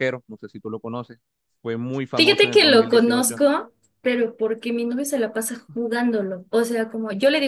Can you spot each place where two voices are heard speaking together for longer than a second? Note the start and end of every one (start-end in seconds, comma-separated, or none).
2.1-3.4